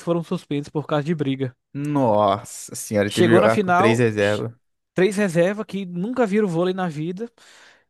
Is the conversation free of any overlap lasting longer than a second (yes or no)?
no